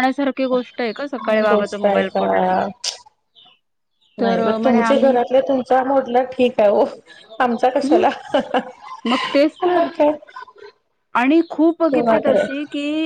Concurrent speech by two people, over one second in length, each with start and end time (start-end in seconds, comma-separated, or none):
1.2-2.6